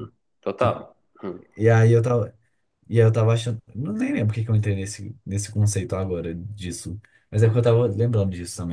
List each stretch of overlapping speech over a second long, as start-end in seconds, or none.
none